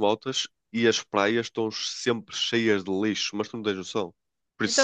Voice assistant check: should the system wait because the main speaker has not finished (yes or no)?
no